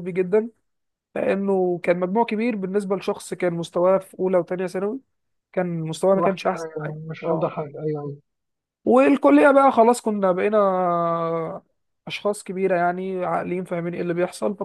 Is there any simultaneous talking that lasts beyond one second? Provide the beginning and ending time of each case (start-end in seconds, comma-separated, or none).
6.1-7.5